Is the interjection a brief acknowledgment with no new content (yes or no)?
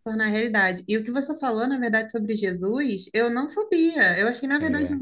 yes